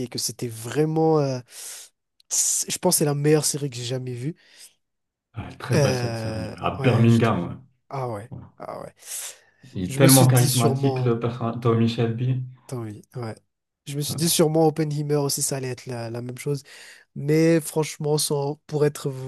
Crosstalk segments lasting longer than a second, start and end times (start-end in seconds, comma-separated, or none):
5.7-7.5, 9.9-11.1